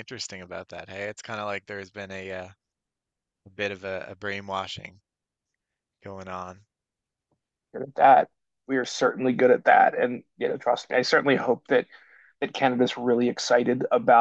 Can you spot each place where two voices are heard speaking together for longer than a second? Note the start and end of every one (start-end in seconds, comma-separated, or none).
none